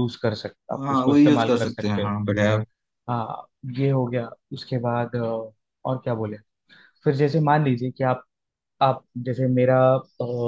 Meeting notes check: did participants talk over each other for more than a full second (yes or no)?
yes